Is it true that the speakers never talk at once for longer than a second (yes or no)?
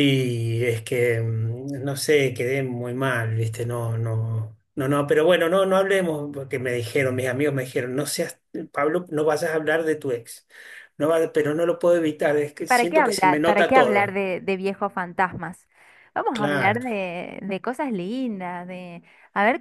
no